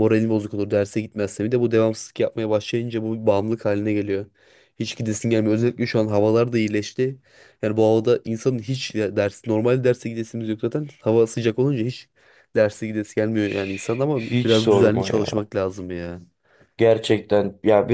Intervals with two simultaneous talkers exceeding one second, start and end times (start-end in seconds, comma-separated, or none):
14.1-15.5